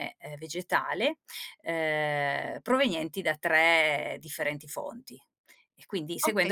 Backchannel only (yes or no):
no